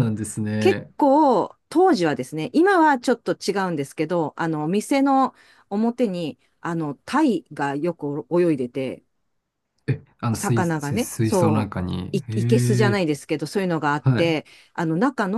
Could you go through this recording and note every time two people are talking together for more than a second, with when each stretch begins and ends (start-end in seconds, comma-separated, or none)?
10.3-13.0